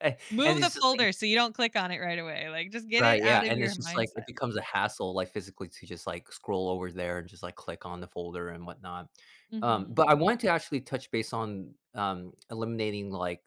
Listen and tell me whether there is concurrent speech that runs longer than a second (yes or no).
yes